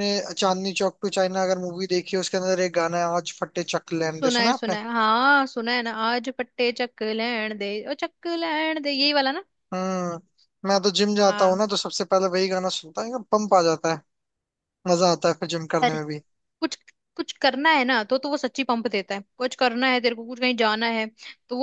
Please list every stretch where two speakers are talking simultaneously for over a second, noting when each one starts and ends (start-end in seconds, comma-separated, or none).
none